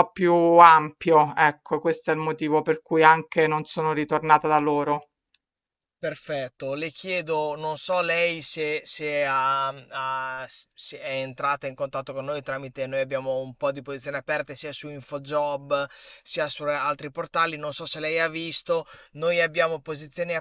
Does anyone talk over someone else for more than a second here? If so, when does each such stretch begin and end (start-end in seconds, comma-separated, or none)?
none